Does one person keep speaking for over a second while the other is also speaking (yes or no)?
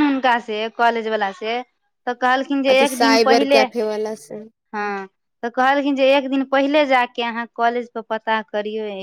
yes